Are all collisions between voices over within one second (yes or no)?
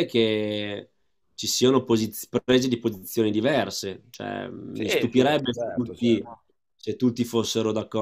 no